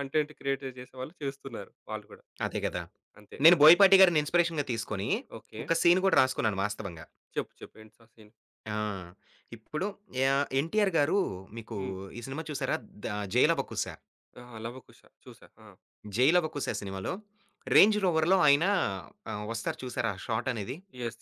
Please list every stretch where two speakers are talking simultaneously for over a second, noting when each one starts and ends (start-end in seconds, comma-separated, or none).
none